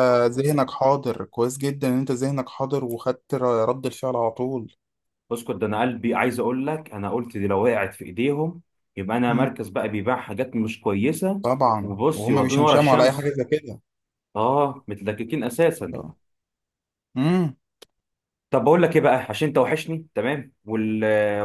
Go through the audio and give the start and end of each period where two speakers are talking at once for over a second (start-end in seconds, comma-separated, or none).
11.8-13.4